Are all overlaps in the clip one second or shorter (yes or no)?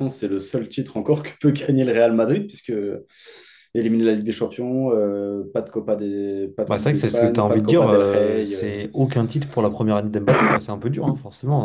no